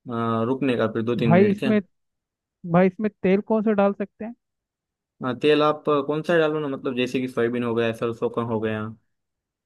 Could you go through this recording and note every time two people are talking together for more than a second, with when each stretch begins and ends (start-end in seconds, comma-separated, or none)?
none